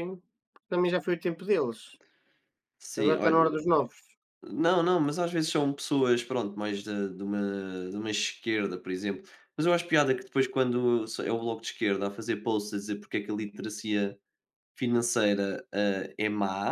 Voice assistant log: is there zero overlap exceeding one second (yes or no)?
yes